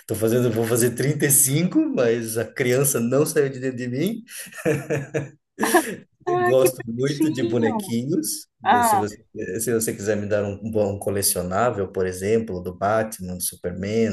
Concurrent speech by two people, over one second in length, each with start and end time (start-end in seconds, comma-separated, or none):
6.3-7.9